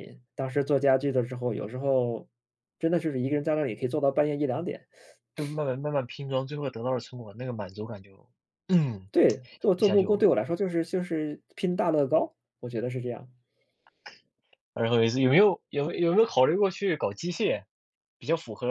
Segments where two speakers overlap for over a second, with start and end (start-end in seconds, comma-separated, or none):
none